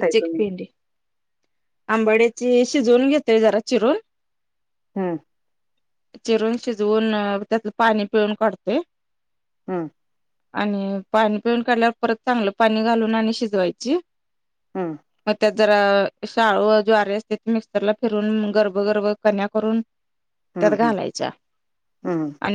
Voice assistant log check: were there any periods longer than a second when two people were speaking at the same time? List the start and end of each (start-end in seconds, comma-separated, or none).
none